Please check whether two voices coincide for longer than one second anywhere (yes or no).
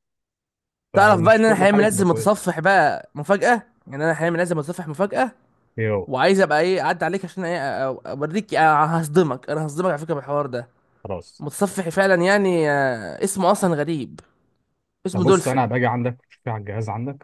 yes